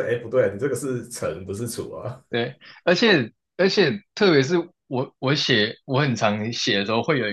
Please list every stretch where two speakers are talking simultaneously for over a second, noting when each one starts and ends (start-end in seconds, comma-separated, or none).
none